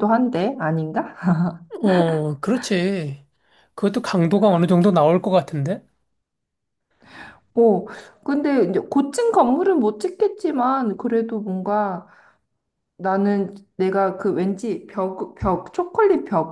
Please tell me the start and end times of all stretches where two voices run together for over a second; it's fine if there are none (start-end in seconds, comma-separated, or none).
none